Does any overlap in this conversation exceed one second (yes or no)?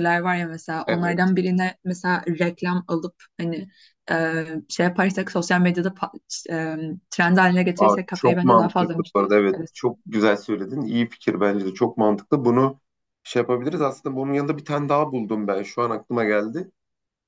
yes